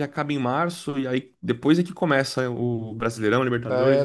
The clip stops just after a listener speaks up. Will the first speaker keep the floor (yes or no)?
no